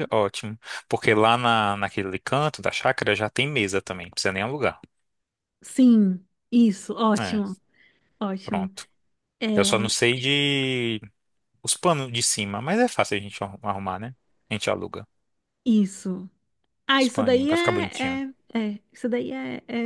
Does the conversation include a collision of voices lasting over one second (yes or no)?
yes